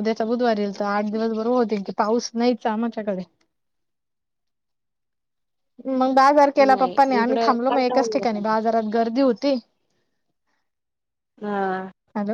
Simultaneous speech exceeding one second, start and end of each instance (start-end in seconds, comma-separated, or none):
6.7-8.6